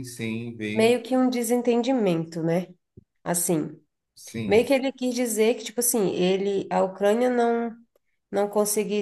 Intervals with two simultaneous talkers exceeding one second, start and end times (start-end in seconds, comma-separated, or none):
none